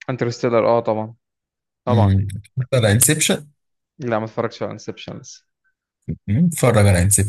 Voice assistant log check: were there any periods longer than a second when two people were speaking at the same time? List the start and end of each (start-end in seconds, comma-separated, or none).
none